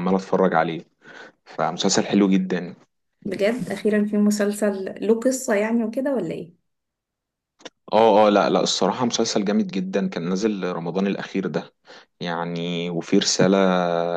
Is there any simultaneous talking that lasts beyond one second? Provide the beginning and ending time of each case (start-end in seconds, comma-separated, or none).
none